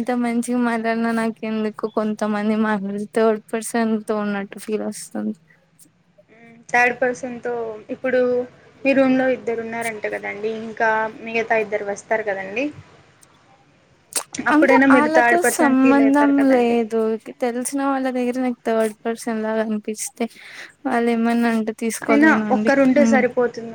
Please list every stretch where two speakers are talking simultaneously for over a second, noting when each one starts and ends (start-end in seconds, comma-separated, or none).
14.5-16.8